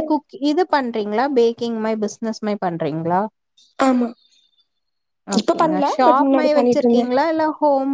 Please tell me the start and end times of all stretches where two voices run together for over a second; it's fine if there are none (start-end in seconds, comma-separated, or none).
5.4-7.0